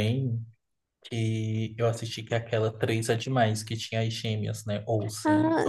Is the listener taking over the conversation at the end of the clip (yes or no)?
yes